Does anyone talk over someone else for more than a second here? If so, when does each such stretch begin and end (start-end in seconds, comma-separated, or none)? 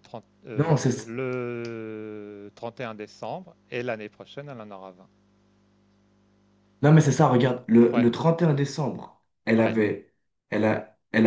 none